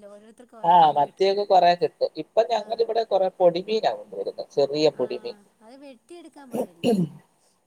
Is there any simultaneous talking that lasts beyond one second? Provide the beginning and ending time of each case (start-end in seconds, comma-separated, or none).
none